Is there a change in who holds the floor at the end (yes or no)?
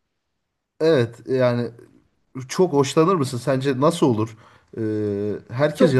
yes